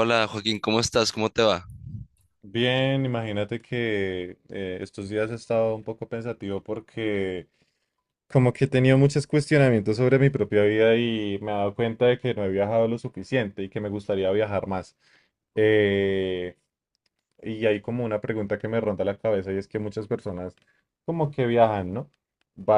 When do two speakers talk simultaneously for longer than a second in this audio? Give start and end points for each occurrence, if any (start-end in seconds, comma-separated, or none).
none